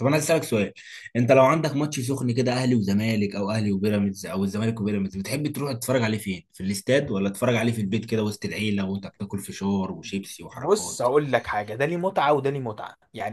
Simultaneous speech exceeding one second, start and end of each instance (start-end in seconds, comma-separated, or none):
none